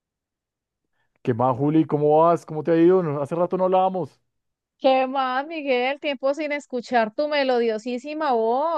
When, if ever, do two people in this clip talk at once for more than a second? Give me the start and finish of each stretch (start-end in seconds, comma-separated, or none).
none